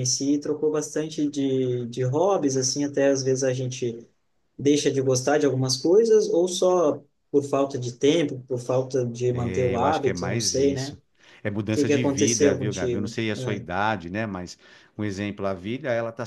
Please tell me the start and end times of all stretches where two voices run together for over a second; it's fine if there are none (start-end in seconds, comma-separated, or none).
9.7-11.0, 11.7-13.7